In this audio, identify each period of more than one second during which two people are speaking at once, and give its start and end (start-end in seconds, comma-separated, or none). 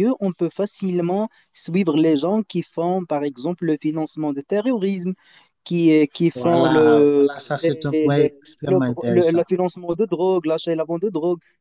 6.3-9.4